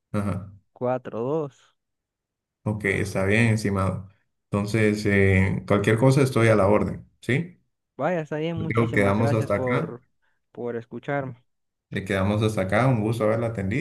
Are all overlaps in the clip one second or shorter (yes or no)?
no